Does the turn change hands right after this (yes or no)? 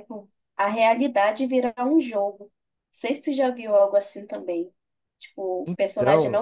no